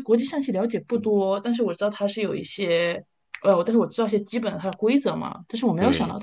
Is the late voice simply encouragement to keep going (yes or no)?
yes